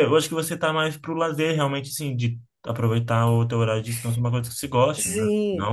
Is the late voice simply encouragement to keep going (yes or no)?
no